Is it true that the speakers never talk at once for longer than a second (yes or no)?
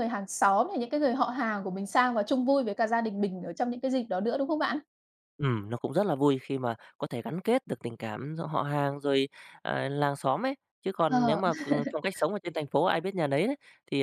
yes